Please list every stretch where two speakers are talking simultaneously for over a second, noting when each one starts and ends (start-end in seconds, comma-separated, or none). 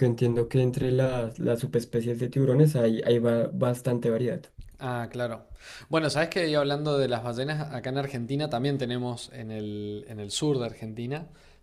none